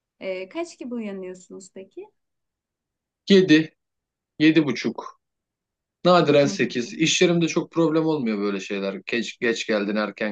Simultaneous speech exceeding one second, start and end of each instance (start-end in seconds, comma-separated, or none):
none